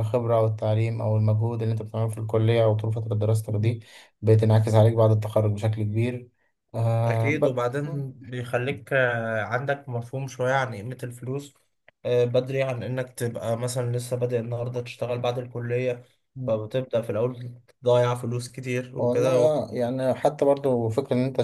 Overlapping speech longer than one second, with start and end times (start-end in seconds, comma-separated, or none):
none